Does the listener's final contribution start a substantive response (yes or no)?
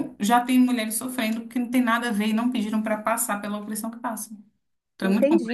yes